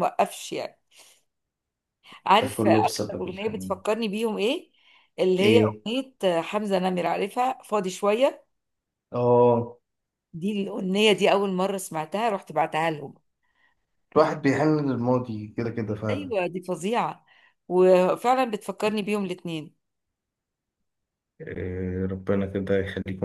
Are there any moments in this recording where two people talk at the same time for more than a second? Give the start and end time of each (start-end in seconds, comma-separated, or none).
2.4-3.8